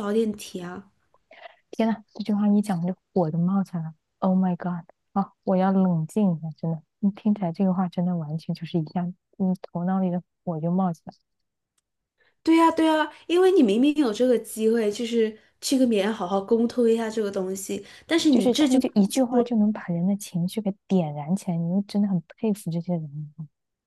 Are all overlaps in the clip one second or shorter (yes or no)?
no